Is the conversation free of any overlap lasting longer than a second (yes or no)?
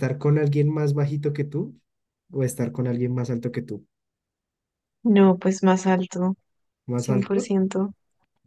yes